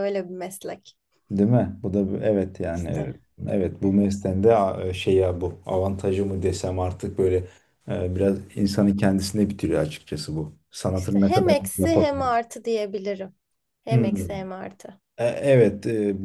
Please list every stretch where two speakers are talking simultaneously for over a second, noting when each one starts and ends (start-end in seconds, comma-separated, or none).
10.9-12.4